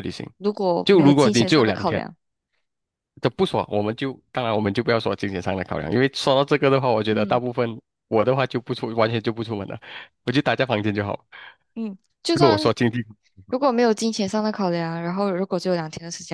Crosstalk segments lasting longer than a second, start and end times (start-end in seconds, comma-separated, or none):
0.8-2.0